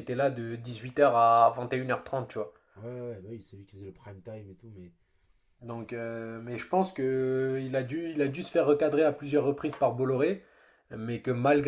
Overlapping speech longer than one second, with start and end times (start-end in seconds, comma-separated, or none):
none